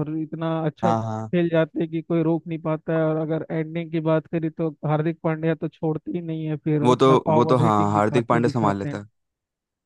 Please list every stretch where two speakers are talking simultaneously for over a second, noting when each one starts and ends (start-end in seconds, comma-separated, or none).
6.8-9.0